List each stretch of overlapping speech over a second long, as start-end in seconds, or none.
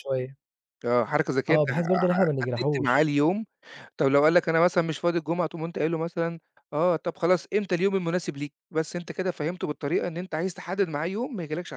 1.5-3.1